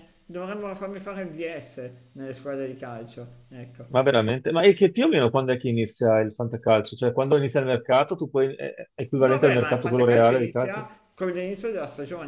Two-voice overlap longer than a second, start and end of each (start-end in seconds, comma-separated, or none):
9.2-10.9